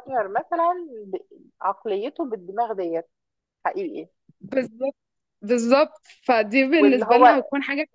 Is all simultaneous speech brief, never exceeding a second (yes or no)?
yes